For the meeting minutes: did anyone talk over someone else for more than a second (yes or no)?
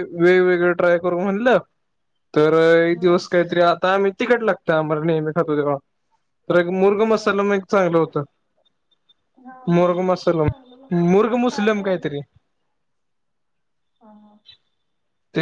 yes